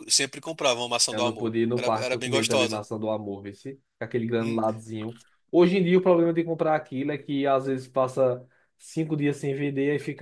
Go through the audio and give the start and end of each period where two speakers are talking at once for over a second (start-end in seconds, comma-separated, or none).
1.1-2.8